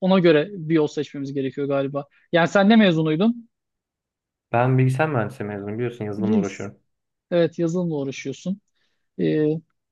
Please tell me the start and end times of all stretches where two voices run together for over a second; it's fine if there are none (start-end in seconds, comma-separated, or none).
none